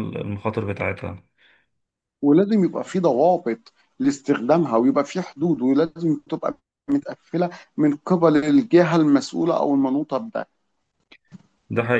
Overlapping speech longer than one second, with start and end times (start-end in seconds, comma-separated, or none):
none